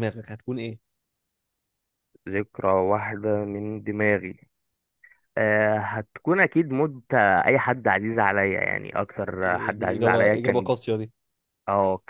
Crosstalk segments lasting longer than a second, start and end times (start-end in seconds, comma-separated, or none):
9.4-10.8